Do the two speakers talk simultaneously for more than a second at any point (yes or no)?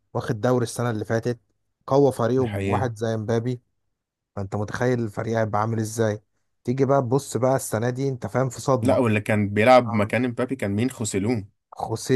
no